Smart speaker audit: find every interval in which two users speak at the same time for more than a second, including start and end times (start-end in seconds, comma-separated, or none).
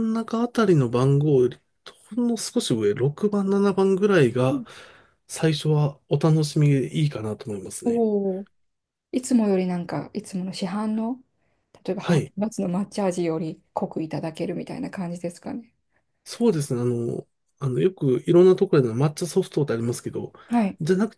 none